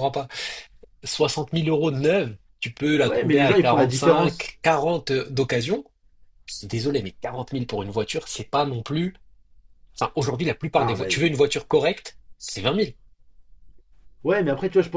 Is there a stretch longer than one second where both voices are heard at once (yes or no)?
yes